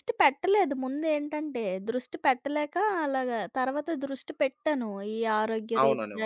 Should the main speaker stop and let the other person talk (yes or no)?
no